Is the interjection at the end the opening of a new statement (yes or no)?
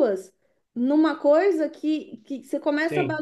no